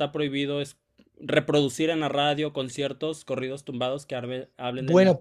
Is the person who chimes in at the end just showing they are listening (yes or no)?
no